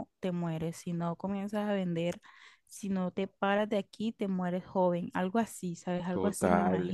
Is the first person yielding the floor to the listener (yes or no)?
yes